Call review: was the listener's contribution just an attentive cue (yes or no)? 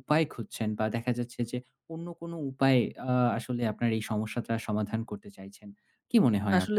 no